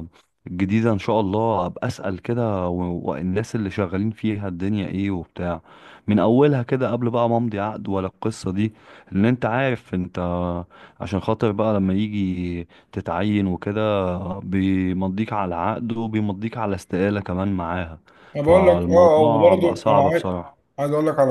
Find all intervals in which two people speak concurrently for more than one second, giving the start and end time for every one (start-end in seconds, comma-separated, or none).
18.4-20.2